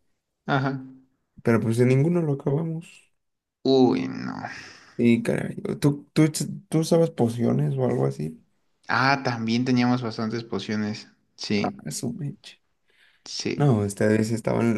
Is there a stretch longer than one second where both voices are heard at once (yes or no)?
no